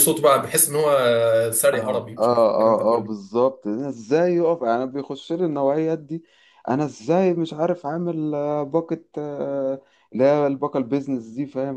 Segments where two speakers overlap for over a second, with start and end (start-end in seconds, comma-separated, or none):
1.7-3.1